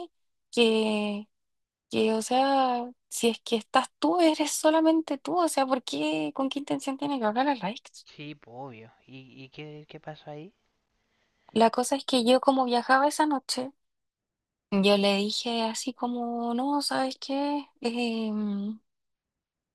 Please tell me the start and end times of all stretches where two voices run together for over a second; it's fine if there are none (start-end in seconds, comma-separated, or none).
none